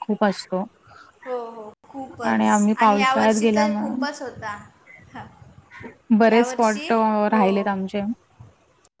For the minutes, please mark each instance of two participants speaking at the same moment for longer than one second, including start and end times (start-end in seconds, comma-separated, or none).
2.5-4.0